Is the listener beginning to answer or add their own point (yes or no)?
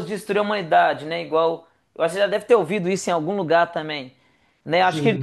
no